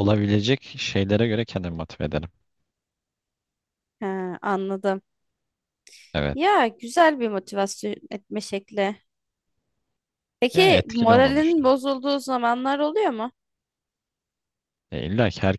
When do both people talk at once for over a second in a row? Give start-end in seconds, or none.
10.5-11.8